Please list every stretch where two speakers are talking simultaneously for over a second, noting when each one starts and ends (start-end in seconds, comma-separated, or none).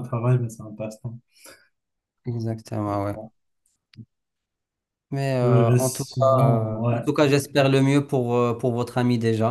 5.4-7.0